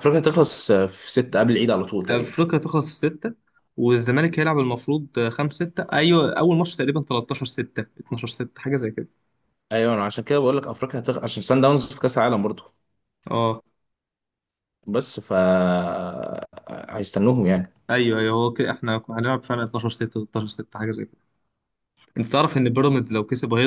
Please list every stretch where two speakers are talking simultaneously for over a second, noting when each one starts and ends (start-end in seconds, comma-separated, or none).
none